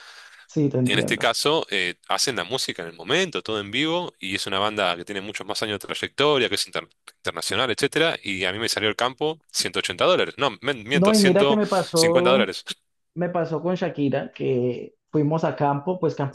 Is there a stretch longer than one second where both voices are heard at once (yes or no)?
yes